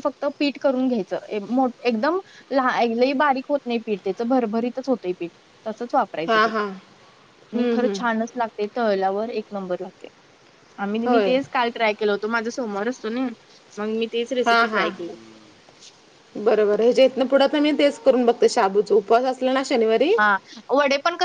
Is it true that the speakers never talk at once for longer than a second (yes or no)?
yes